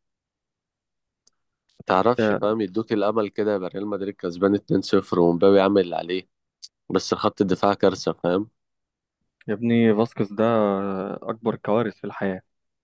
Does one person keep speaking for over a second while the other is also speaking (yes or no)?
no